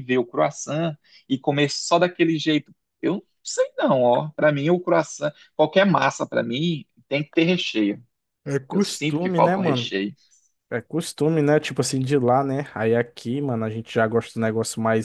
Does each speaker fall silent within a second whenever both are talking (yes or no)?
no